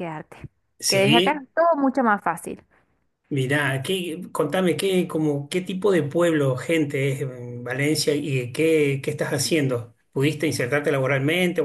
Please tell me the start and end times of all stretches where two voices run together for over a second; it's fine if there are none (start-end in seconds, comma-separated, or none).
none